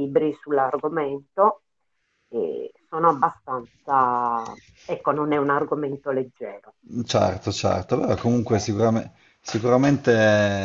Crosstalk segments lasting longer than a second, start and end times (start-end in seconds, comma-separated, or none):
none